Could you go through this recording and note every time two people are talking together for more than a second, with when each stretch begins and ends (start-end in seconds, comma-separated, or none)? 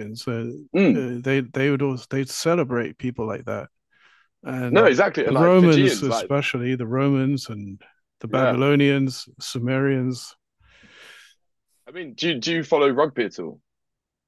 4.7-6.3